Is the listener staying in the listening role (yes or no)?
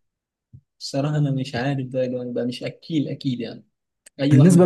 no